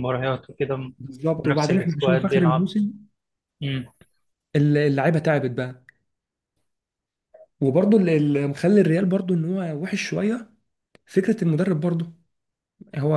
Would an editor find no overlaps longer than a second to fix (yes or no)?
no